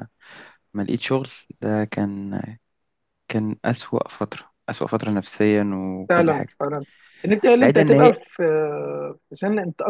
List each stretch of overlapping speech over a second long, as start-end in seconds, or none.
none